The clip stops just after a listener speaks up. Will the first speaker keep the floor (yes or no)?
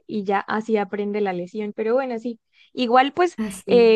yes